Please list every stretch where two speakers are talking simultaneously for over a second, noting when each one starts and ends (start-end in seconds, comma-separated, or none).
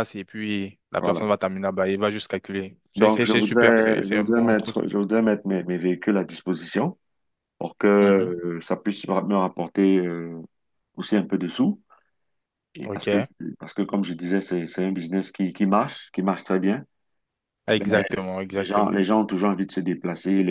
3.0-4.8